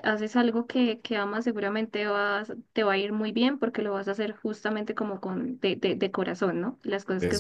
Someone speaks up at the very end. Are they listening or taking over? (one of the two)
listening